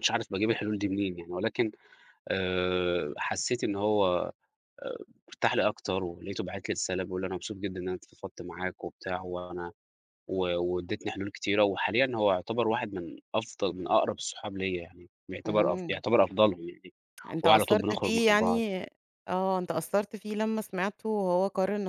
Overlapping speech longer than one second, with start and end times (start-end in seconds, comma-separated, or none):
17.4-18.6